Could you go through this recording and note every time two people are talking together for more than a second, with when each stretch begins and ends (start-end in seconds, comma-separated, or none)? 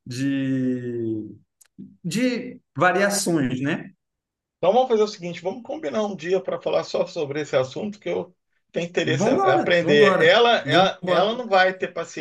9.2-11.4